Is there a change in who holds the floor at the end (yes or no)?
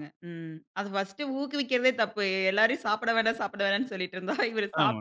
yes